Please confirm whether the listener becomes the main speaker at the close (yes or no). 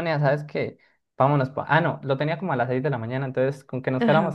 no